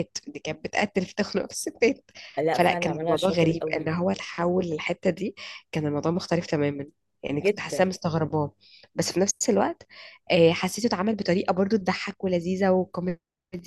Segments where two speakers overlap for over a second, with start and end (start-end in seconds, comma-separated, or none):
2.5-3.9